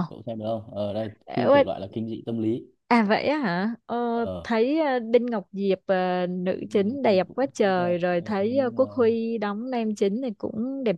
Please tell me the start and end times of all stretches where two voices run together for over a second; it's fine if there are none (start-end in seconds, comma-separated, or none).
6.8-8.8